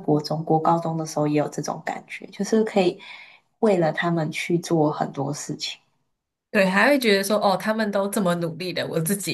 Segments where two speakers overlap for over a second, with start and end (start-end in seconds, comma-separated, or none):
none